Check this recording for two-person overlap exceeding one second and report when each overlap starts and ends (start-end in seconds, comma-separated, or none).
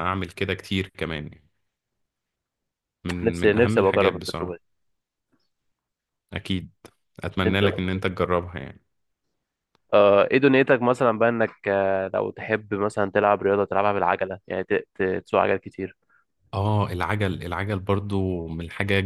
3.2-4.6